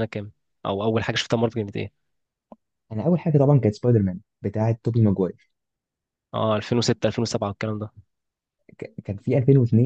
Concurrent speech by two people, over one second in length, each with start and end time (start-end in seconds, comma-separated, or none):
none